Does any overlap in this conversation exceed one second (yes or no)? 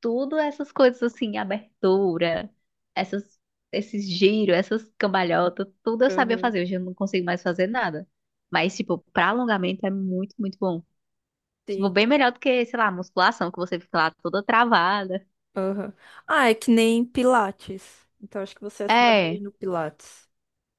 no